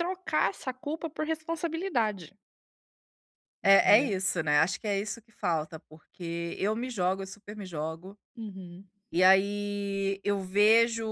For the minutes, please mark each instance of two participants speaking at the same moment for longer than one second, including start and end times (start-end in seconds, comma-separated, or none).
none